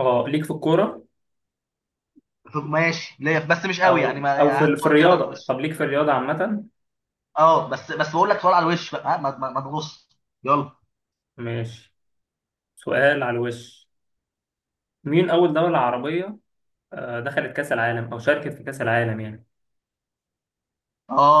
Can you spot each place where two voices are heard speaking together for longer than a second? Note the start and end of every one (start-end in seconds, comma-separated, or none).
3.8-5.5